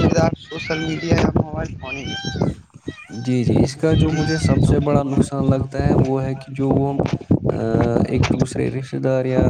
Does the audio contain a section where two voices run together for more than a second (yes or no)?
no